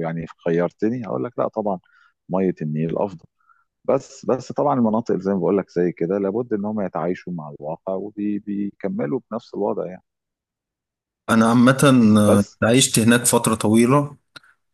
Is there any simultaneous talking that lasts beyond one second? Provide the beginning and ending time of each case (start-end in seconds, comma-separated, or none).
none